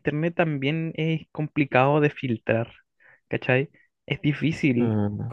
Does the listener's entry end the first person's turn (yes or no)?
no